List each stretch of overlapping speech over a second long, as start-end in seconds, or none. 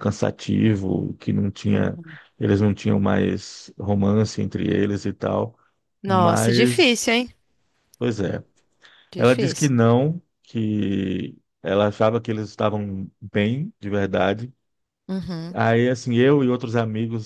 6.0-7.3